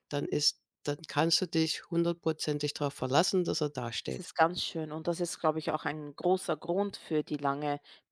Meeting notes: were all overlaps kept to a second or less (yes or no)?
yes